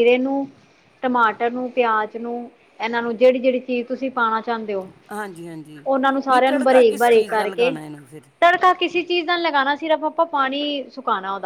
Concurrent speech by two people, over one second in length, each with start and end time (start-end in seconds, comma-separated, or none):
6.3-7.7